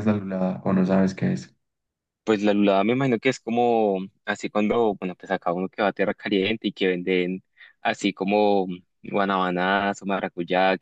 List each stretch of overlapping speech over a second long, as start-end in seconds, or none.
none